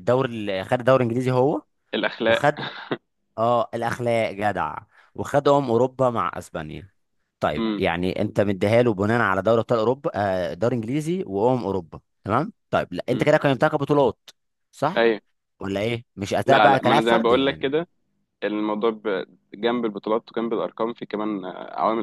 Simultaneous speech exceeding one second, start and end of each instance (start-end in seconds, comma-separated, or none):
16.4-17.7